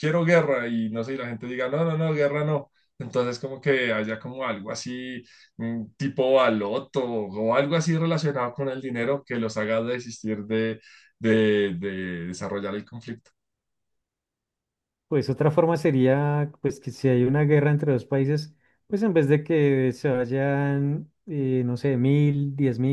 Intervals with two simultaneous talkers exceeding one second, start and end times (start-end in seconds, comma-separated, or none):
none